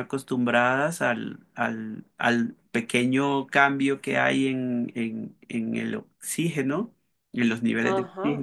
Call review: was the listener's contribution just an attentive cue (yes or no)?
yes